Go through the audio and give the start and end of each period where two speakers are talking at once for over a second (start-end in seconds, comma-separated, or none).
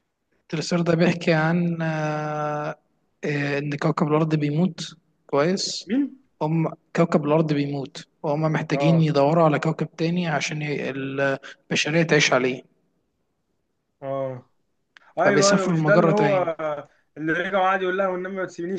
15.2-16.5